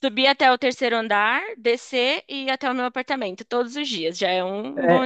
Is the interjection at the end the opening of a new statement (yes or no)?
yes